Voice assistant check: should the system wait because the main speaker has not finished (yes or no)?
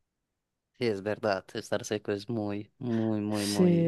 no